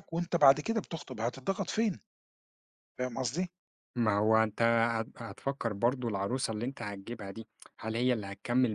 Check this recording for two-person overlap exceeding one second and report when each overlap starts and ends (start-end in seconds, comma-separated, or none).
none